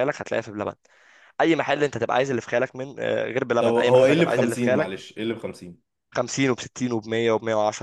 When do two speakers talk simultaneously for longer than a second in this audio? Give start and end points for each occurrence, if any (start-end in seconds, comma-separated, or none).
3.6-4.9